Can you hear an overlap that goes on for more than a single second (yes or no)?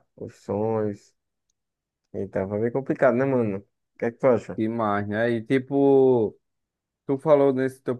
no